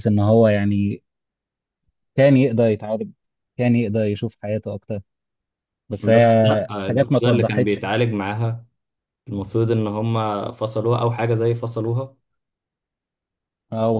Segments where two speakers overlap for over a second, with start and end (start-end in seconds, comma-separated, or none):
6.0-7.9